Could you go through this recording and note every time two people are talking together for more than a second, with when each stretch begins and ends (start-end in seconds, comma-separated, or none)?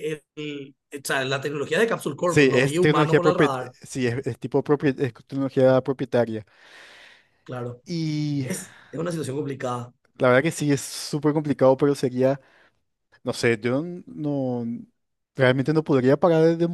2.2-3.7